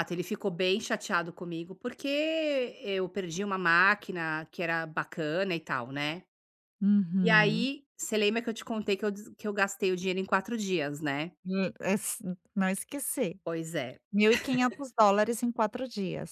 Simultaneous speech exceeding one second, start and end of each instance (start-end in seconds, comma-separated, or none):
none